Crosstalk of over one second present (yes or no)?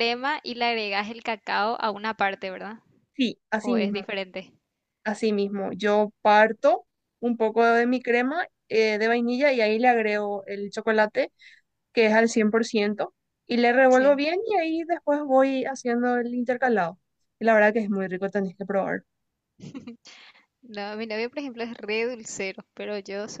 no